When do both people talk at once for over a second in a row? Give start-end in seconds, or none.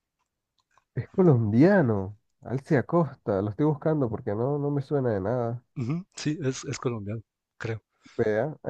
none